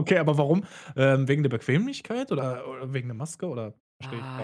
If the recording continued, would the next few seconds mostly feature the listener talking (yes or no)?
yes